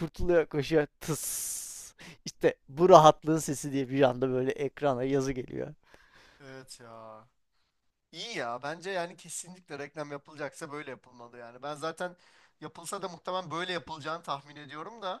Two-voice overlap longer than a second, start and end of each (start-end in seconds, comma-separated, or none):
none